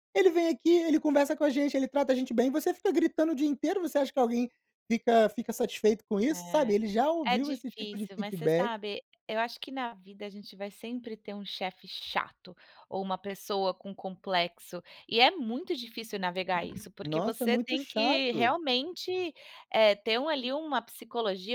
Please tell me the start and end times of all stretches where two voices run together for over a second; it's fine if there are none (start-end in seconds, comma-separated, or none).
7.3-8.7, 17.0-18.6